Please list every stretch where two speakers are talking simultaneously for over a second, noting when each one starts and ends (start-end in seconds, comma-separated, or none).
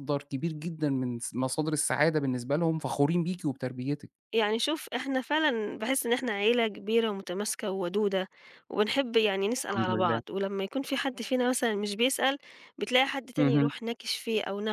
none